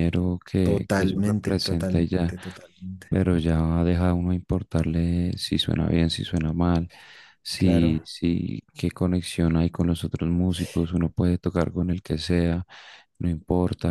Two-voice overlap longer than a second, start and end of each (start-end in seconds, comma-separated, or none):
0.6-2.3